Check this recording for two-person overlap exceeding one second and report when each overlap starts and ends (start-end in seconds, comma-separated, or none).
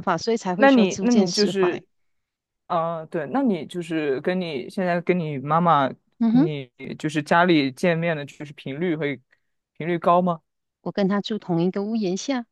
0.6-1.8